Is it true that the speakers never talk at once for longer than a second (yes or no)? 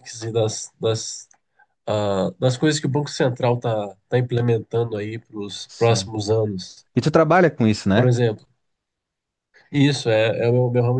yes